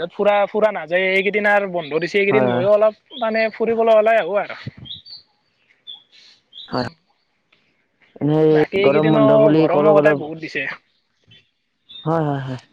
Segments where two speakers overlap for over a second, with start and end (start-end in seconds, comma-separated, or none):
8.9-10.6